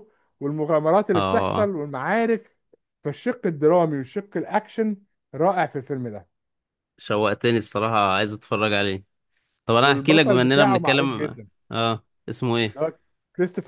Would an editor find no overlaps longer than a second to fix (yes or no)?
no